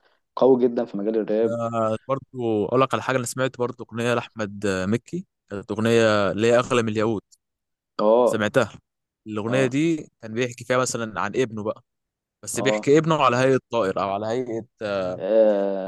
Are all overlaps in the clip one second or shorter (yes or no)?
yes